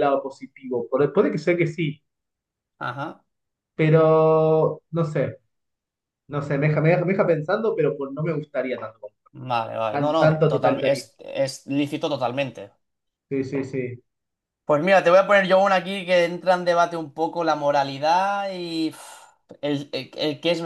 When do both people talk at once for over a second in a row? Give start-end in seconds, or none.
9.9-11.1